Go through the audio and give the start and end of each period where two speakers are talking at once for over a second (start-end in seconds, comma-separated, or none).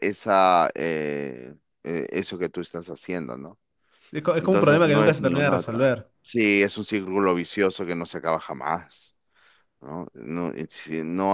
4.4-5.8